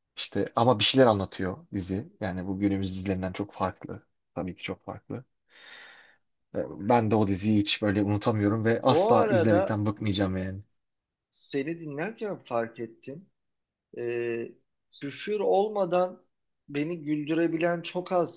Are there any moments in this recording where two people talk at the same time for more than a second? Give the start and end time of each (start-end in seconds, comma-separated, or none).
8.6-9.8